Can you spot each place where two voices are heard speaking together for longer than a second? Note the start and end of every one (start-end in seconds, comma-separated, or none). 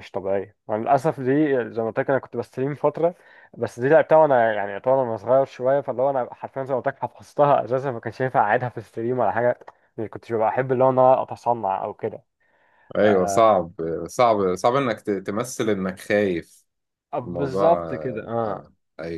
17.2-18.6